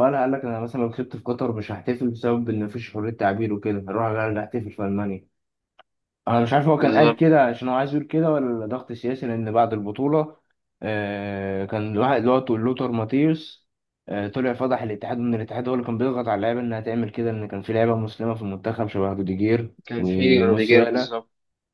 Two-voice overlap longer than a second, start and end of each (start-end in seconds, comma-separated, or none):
19.9-21.2